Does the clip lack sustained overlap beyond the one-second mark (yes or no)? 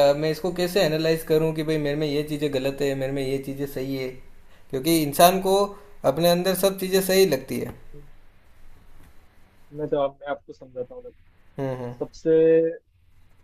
yes